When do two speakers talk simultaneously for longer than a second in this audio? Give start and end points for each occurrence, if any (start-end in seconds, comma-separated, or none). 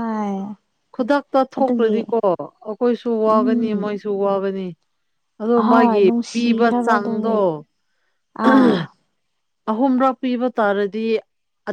5.6-7.3